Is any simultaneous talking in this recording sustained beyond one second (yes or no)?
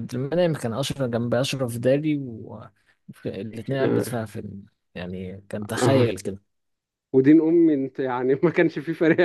no